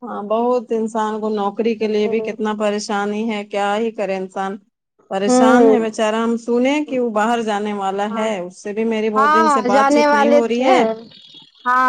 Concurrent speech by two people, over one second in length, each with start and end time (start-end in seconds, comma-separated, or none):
9.2-10.8